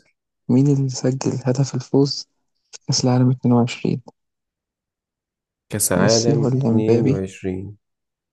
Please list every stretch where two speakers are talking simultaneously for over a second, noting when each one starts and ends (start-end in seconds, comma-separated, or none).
6.0-7.2